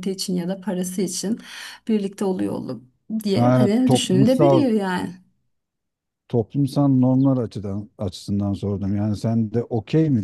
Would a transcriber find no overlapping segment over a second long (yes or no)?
no